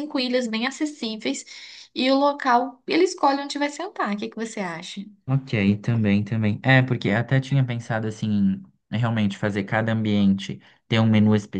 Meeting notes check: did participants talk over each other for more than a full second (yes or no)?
no